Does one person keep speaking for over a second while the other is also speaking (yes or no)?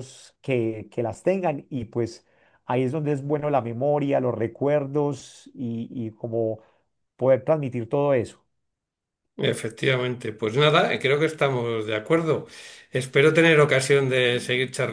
no